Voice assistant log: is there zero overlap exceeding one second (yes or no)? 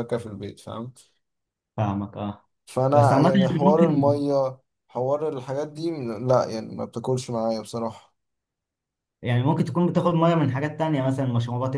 no